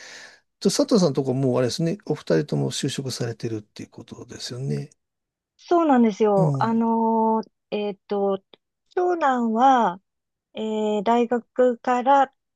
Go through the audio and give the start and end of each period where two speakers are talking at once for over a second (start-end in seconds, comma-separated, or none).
none